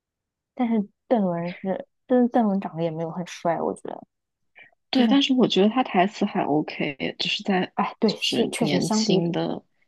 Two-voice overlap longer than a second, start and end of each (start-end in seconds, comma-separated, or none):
7.8-9.3